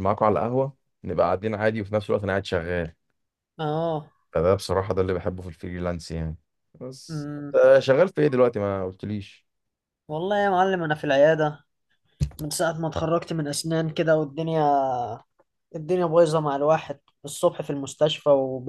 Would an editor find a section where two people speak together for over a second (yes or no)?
no